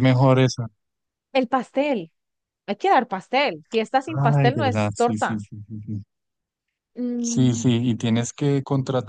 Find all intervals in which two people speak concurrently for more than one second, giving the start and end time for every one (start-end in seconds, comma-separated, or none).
4.1-5.4